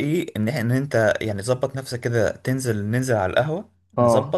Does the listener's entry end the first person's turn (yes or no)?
no